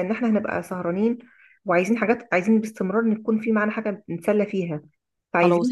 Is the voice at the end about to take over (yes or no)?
no